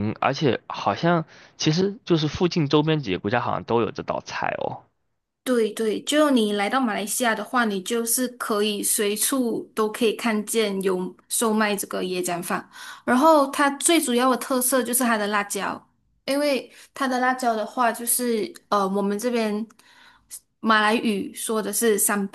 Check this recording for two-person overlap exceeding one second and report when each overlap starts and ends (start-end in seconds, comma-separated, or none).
none